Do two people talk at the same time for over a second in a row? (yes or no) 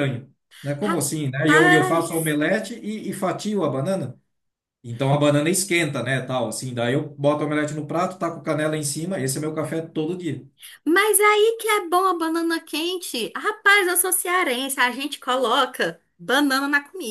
yes